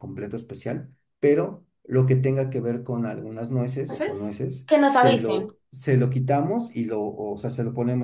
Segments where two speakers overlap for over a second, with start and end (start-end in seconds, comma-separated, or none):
3.9-5.5